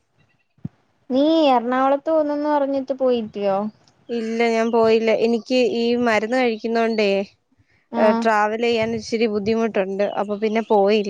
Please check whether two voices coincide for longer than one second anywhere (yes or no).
no